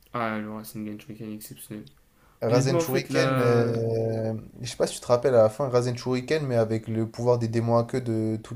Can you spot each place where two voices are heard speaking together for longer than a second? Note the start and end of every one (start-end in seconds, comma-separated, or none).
2.5-3.7